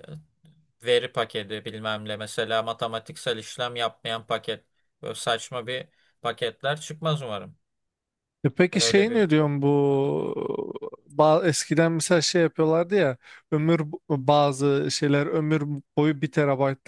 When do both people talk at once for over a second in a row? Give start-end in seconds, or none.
none